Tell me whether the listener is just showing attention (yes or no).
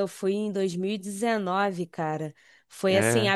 yes